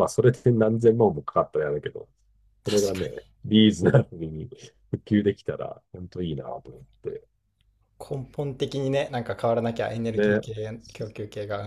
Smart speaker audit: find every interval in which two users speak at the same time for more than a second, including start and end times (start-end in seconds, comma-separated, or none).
none